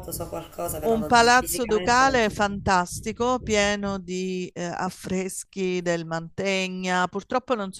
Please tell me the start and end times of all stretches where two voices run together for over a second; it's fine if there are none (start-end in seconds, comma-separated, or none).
0.8-2.6